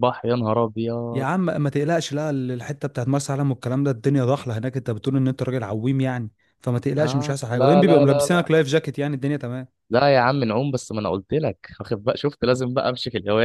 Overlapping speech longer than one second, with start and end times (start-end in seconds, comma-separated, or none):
7.0-8.5